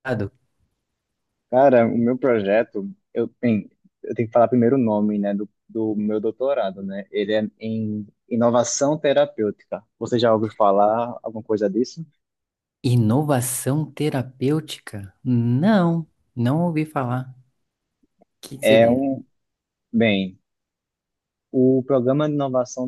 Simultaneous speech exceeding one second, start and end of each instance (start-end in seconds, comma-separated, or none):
none